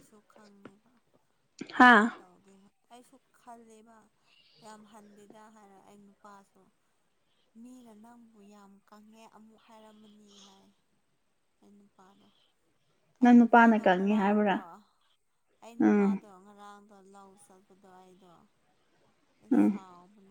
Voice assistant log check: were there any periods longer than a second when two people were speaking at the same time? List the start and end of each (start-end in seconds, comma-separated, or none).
13.2-14.6